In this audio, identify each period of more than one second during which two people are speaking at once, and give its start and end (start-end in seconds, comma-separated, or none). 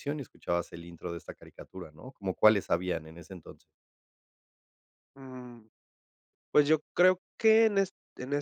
none